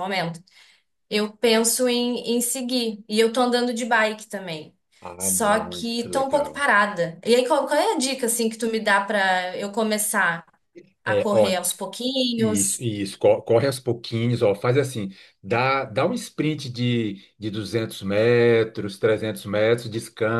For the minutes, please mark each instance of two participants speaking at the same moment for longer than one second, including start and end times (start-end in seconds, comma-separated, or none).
5.2-6.6